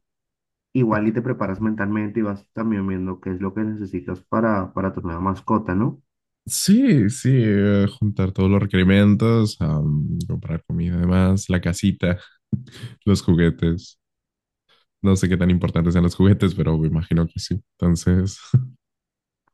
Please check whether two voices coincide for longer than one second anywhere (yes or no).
no